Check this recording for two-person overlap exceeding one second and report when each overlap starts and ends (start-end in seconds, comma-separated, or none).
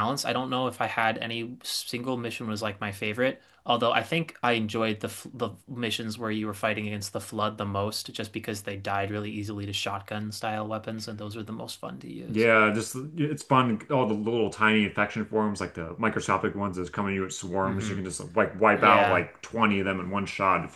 none